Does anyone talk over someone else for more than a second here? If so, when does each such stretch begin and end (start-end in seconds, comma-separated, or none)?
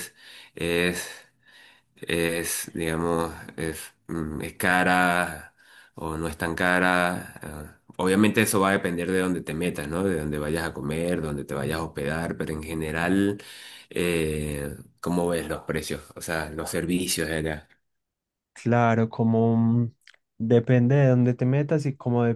none